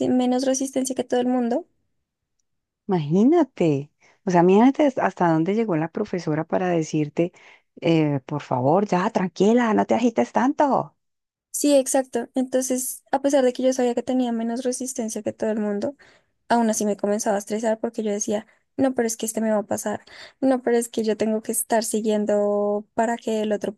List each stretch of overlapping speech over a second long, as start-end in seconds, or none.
none